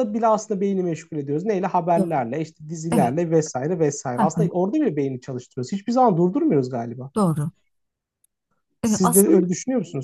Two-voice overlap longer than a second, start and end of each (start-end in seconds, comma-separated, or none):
none